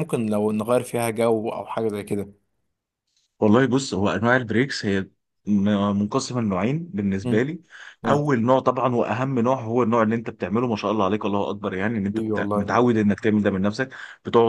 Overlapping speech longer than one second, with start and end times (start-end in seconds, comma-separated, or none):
none